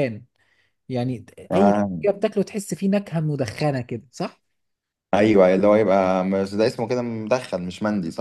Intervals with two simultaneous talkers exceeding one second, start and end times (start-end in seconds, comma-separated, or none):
none